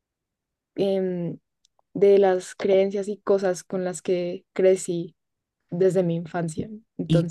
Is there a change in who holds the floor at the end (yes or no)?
yes